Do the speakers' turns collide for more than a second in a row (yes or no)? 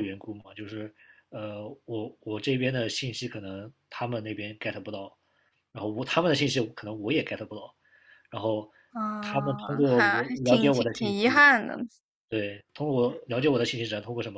yes